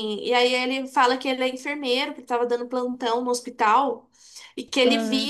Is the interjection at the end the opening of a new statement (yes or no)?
no